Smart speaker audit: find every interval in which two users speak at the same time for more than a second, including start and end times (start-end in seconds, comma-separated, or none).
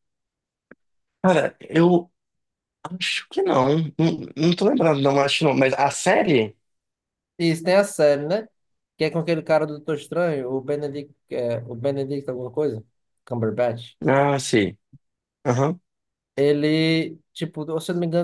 none